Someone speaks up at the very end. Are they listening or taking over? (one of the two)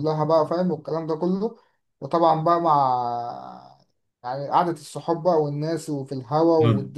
taking over